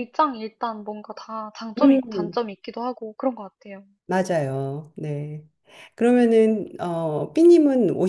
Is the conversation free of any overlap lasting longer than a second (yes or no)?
yes